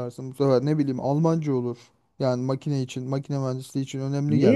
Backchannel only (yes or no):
no